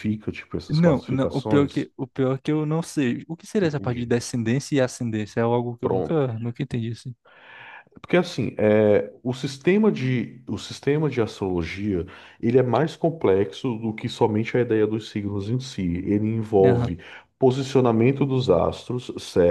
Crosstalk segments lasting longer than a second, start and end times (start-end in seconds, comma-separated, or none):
0.7-1.9